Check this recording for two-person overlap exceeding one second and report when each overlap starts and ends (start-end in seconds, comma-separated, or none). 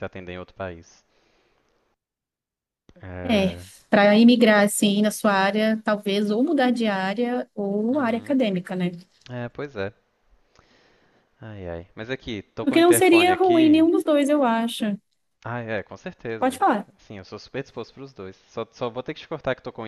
12.6-13.9